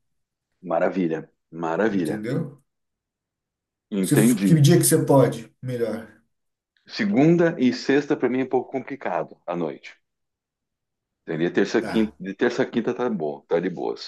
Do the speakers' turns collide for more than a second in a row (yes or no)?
no